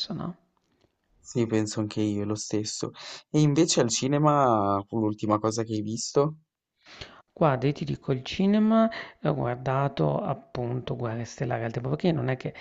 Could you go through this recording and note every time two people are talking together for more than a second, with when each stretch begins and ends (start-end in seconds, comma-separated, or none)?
none